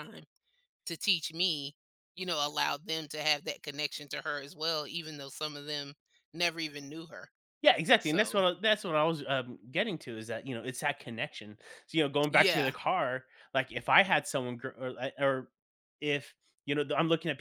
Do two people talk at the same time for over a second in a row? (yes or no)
no